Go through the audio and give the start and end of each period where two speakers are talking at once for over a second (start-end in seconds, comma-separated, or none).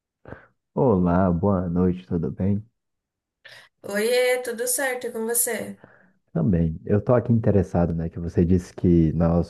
none